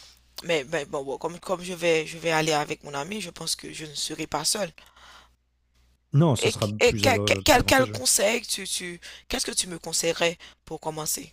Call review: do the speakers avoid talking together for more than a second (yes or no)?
no